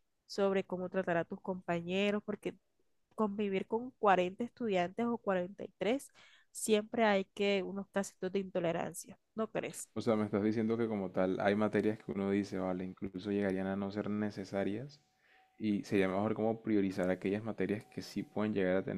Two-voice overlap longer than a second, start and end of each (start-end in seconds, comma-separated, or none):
none